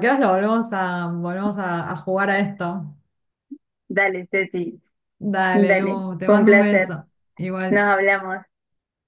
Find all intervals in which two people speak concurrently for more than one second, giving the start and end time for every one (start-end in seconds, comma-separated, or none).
5.5-7.0